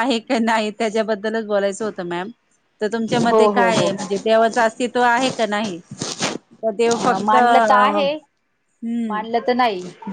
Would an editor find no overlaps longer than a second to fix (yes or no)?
yes